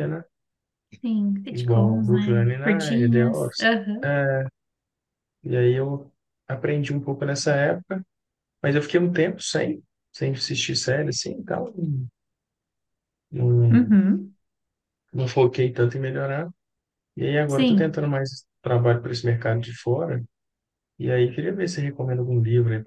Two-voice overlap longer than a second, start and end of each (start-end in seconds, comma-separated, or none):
1.5-4.1